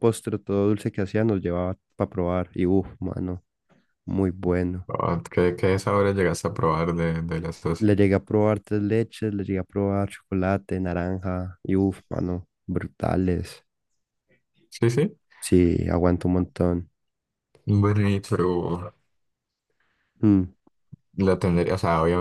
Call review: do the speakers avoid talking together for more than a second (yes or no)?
yes